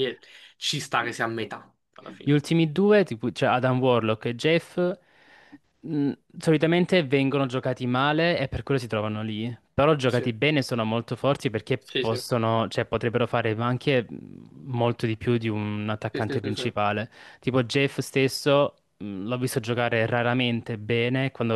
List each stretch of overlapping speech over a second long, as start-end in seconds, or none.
none